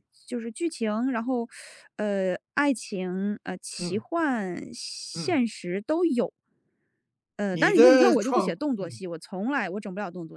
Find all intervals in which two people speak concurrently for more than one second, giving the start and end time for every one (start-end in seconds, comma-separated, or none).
7.5-9.0